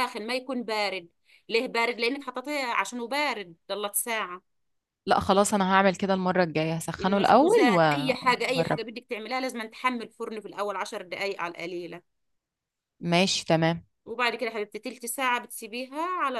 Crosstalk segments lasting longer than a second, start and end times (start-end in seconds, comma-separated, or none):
7.0-8.8